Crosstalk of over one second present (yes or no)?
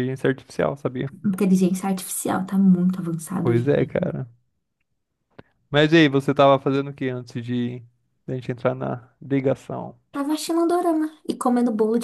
no